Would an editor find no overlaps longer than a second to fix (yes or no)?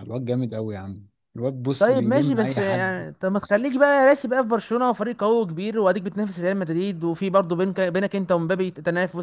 no